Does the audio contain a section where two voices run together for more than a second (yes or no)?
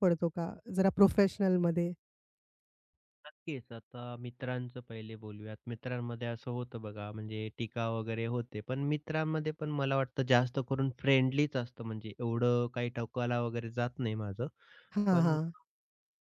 no